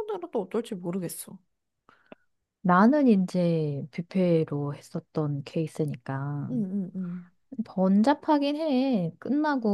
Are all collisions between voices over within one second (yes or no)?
yes